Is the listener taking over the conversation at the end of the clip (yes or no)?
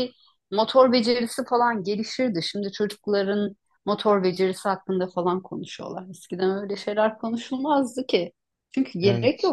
no